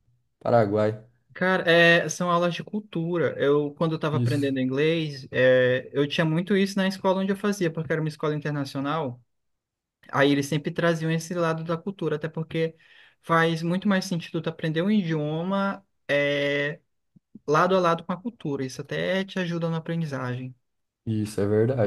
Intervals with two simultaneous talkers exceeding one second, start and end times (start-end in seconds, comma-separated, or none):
none